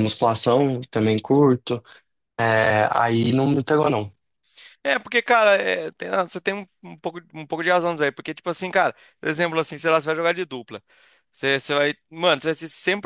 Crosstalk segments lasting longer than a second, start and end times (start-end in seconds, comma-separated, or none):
none